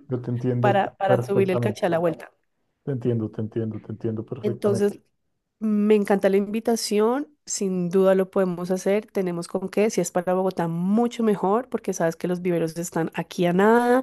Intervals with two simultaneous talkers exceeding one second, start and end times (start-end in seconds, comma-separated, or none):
0.6-1.8